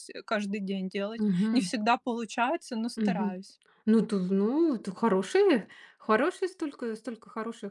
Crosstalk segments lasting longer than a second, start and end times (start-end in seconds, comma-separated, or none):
none